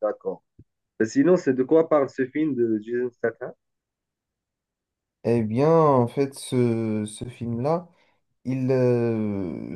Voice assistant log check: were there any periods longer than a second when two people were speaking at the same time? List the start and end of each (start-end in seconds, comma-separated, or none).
none